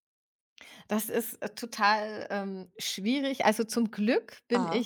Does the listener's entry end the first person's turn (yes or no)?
no